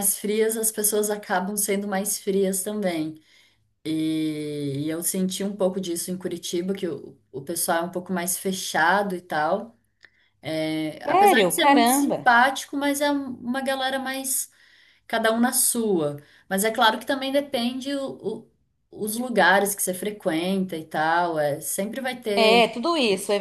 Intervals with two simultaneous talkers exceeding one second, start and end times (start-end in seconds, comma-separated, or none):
11.0-12.3